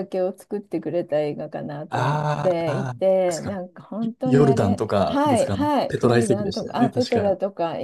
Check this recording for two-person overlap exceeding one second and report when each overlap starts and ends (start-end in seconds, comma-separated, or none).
1.9-3.6, 4.2-7.3